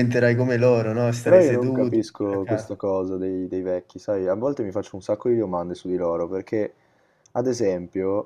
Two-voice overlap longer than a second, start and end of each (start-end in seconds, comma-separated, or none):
1.2-2.8